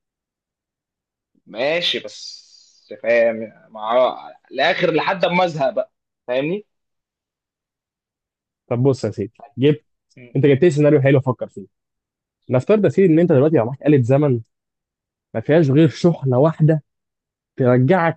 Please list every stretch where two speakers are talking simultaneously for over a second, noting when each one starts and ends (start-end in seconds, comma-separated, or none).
none